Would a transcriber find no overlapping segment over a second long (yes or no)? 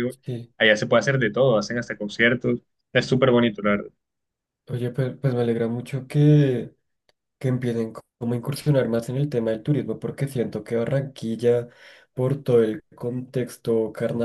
yes